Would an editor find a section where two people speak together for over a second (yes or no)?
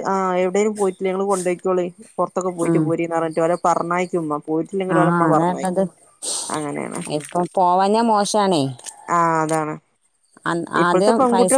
no